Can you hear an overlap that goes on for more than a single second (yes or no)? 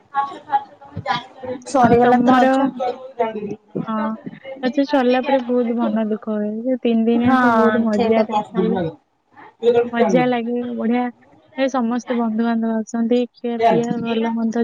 yes